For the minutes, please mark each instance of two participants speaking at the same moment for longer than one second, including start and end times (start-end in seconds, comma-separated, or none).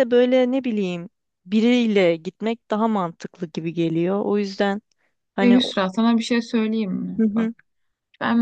none